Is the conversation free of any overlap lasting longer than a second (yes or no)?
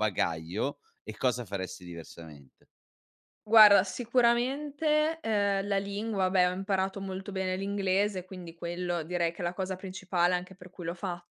yes